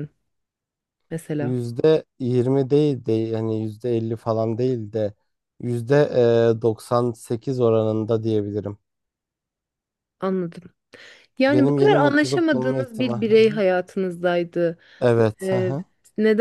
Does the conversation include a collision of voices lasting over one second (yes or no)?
yes